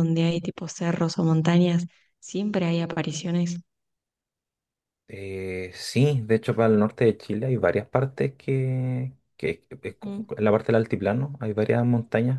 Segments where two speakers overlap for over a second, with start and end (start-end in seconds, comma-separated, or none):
none